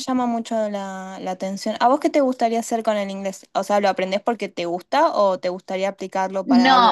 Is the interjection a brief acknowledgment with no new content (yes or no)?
no